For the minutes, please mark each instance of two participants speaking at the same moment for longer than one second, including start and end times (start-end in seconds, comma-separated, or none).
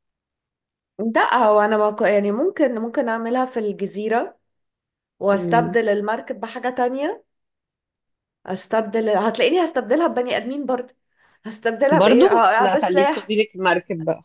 11.9-13.3